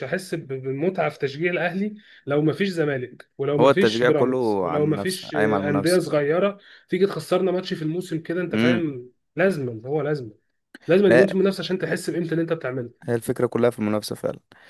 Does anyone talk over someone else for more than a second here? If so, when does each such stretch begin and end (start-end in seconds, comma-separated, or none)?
3.6-6.0